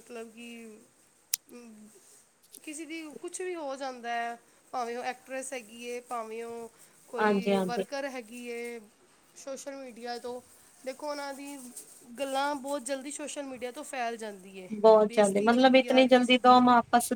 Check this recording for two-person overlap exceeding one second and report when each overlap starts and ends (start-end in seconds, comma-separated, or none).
15.1-16.6